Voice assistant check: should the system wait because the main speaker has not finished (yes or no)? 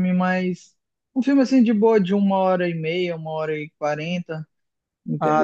no